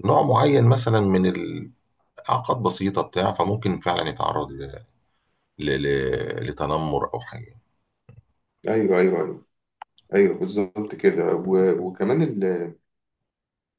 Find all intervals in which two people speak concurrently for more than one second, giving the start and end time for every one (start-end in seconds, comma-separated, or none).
none